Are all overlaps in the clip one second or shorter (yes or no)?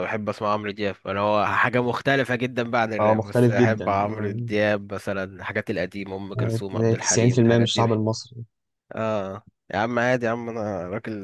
no